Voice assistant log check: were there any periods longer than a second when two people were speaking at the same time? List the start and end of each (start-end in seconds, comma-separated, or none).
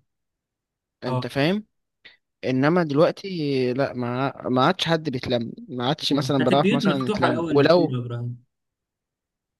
6.1-8.0